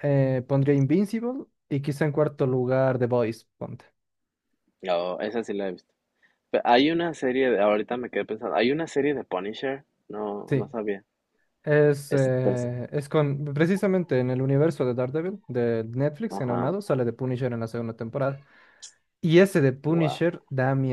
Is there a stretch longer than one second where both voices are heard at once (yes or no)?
no